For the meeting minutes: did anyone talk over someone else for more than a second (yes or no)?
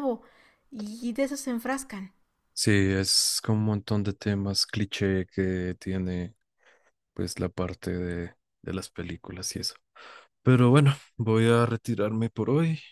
no